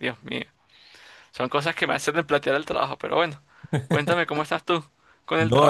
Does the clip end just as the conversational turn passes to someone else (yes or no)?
yes